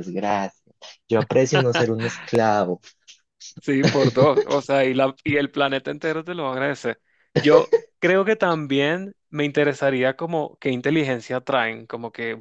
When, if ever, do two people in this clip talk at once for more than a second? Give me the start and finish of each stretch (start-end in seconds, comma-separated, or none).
none